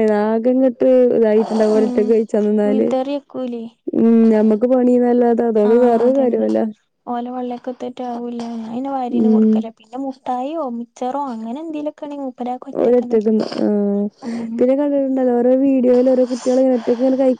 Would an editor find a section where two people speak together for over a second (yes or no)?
no